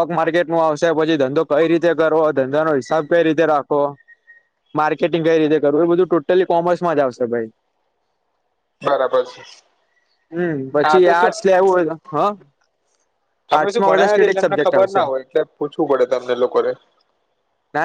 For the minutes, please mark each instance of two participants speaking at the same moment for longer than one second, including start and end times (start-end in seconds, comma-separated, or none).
13.5-15.0